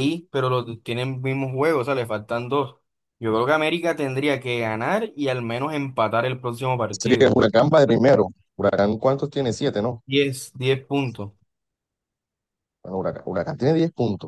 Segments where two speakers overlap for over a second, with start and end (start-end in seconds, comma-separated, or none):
none